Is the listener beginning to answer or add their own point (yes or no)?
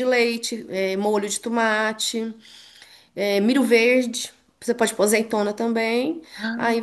no